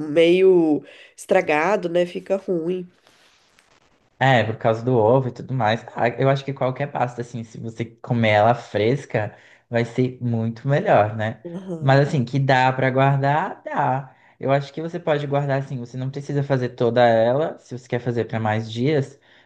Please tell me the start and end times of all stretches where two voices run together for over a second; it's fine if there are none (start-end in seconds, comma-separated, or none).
none